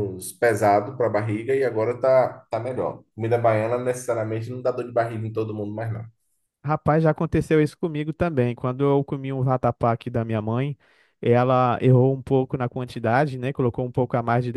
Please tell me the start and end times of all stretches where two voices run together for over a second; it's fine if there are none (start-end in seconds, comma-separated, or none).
none